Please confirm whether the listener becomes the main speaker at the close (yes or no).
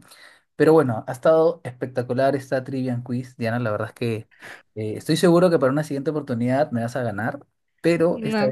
yes